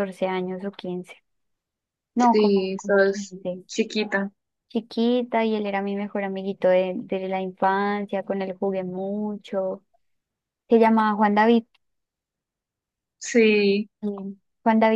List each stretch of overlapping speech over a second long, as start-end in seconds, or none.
2.2-3.6